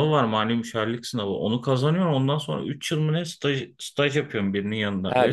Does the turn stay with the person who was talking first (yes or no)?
no